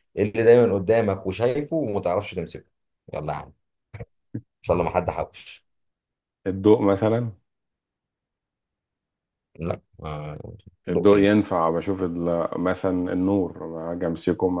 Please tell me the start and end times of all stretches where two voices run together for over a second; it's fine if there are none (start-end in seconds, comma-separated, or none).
none